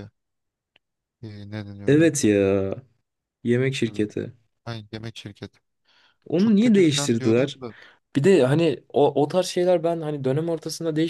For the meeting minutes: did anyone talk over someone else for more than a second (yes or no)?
yes